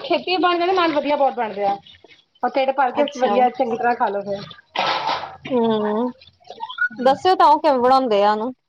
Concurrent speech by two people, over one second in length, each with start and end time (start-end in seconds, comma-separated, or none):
none